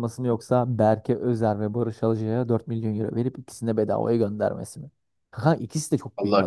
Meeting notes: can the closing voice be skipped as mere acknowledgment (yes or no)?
no